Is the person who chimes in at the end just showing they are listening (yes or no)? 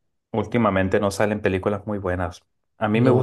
yes